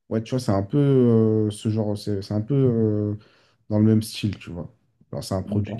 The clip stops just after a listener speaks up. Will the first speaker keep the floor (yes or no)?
yes